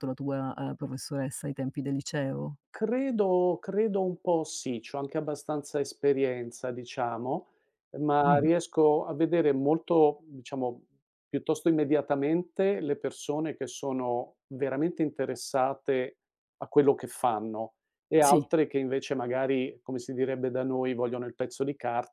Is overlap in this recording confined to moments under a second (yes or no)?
yes